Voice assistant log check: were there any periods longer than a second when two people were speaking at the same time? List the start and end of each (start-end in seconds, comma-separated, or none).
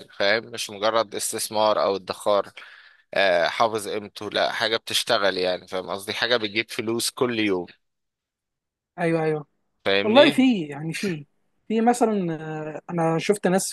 none